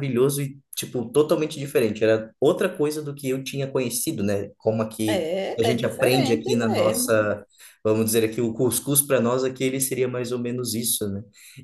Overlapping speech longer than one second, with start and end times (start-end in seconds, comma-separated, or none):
5.1-7.1